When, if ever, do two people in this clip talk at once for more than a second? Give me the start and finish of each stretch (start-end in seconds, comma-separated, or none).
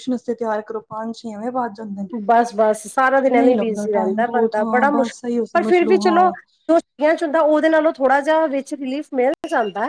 3.4-6.3